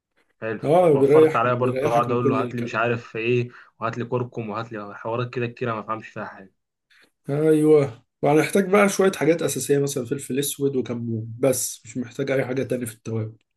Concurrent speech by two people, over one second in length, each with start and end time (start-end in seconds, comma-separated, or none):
0.6-3.0